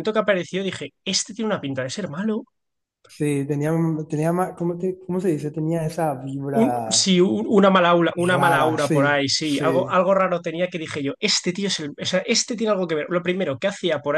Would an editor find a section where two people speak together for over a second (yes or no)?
yes